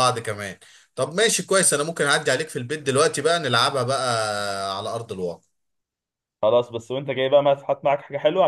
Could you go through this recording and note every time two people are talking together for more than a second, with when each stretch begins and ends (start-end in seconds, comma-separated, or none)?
none